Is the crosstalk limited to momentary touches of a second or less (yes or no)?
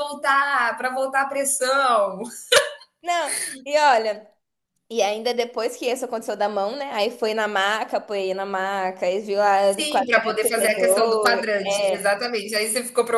no